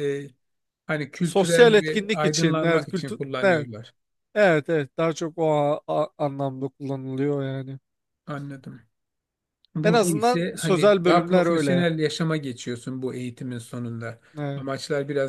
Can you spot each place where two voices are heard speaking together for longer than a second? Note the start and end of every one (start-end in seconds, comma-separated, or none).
1.2-3.7, 9.8-11.9